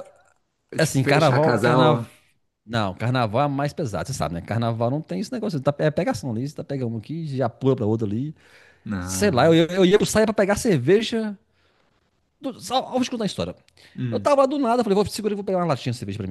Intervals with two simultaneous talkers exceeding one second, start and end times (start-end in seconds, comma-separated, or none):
0.8-2.0